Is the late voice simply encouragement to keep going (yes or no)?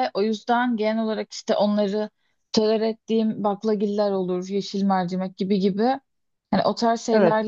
yes